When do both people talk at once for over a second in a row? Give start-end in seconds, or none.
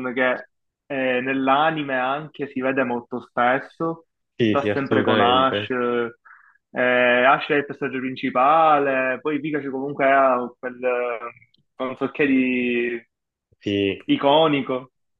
4.5-5.7